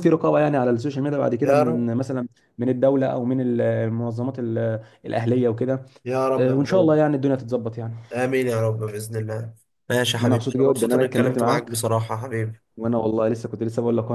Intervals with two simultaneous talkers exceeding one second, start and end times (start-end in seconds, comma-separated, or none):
10.2-11.8